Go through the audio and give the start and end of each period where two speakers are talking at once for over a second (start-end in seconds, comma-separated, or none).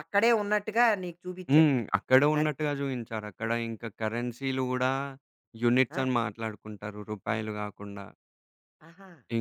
none